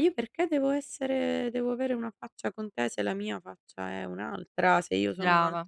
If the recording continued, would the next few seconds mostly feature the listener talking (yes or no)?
no